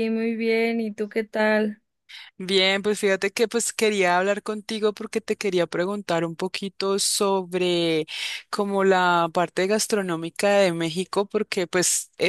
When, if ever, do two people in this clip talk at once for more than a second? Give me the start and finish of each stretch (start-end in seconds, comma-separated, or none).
none